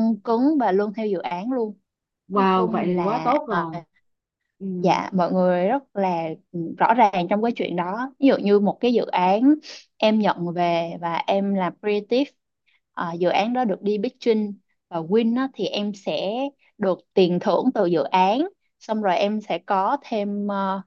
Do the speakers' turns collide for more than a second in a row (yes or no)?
yes